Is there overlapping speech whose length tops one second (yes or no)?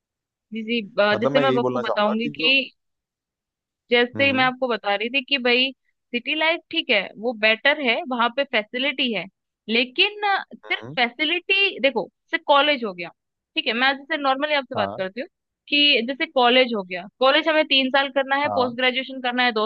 yes